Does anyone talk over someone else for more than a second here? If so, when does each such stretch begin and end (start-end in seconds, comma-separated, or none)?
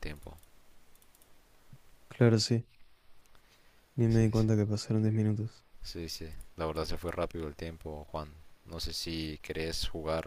none